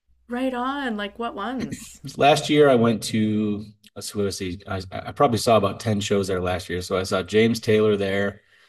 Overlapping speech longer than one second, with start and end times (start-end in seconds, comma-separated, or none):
none